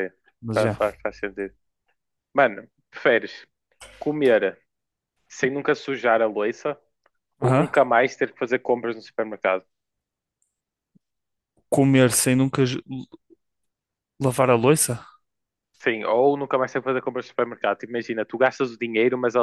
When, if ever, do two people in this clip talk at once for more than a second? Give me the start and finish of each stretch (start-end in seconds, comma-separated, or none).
none